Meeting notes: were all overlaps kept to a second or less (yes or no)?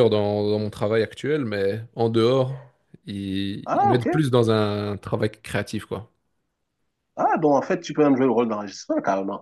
yes